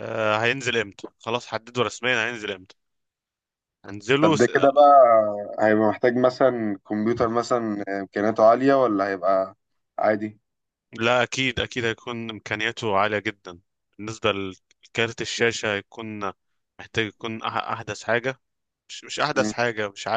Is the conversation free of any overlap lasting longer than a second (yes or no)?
yes